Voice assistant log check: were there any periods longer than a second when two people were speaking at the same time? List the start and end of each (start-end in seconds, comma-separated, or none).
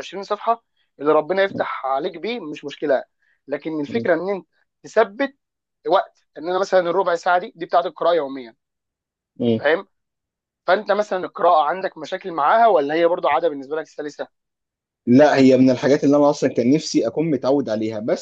none